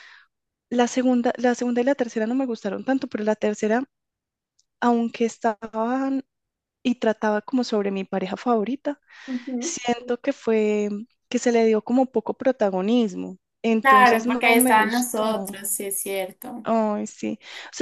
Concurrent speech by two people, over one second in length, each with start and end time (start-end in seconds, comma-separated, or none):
13.8-15.6